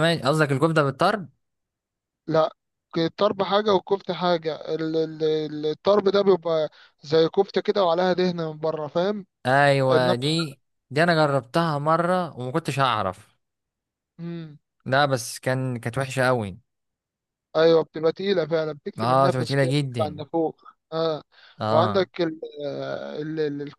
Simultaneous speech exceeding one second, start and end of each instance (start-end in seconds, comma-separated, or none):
19.0-20.2